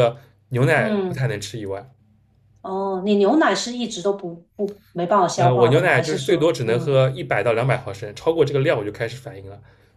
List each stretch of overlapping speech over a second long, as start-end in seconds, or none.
5.3-7.0